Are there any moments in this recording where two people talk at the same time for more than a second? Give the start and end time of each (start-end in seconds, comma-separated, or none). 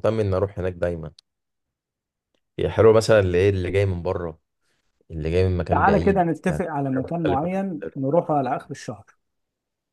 5.7-7.5